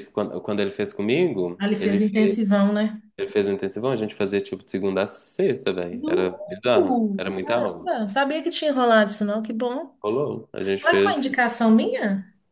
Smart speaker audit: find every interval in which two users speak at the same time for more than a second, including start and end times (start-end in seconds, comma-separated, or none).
5.9-7.9